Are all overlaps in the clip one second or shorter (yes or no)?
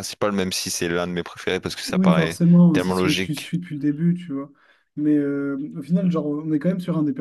no